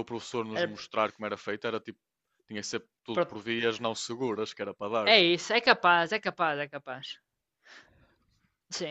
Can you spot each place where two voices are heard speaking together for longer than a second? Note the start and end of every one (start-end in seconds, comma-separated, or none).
none